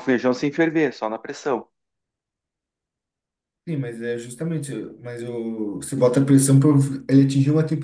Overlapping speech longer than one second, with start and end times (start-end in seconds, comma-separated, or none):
none